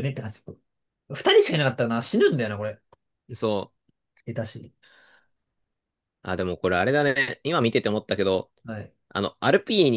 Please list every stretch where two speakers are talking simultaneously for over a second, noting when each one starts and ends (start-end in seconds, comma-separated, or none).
none